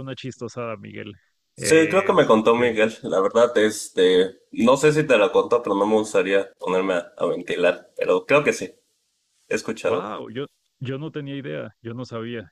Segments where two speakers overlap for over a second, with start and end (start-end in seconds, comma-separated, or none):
1.6-2.8